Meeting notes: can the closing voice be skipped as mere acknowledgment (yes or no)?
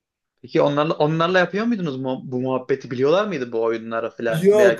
no